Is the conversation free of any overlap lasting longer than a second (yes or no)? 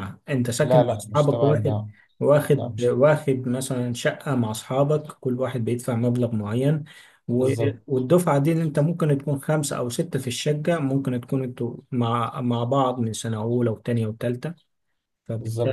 no